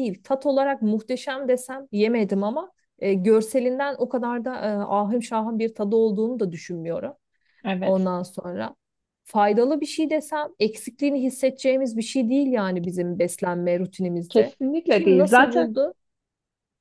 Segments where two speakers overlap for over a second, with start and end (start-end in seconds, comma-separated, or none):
14.3-15.7